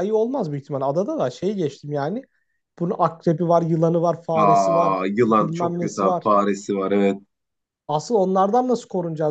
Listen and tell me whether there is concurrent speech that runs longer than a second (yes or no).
yes